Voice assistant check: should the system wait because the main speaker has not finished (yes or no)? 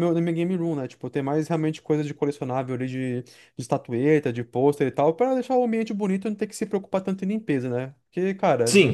no